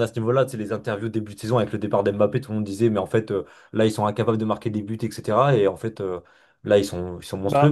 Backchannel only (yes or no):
yes